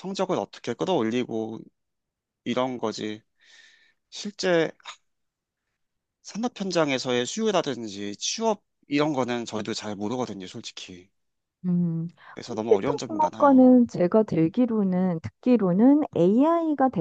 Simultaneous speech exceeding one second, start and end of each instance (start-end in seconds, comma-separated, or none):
12.4-13.7